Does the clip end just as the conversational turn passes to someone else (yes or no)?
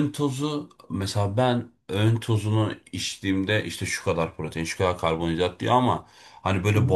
no